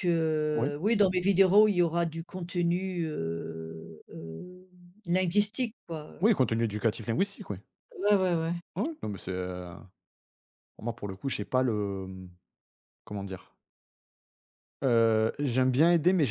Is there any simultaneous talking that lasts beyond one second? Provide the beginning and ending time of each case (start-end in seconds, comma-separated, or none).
none